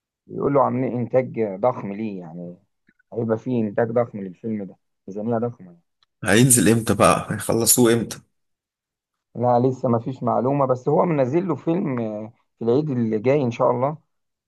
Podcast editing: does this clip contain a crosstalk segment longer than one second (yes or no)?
no